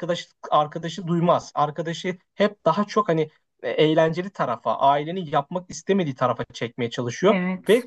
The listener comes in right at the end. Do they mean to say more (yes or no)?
no